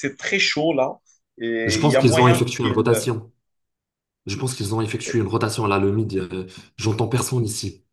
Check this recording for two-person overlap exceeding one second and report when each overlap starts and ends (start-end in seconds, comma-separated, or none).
1.6-3.0